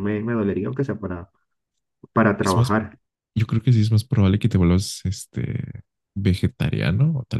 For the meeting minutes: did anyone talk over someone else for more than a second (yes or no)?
no